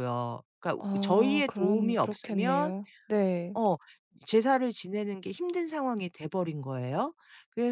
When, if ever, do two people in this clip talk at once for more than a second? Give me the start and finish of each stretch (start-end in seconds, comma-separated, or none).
0.8-2.7